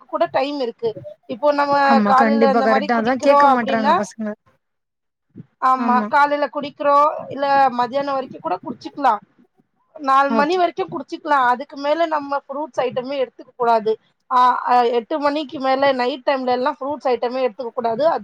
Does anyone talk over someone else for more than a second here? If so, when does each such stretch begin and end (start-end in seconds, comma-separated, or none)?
1.9-4.0